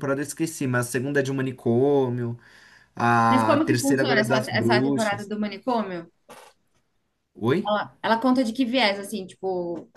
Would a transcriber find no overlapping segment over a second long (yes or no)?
no